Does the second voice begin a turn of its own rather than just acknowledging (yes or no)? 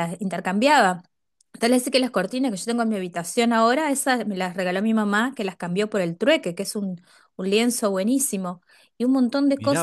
yes